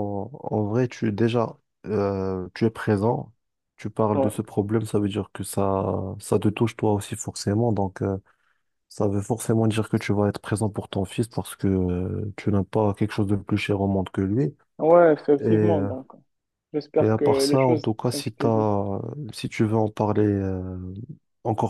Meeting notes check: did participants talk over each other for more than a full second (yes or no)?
yes